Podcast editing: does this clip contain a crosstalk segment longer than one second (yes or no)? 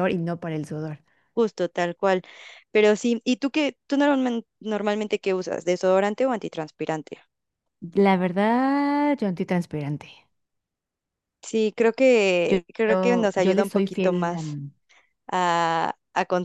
yes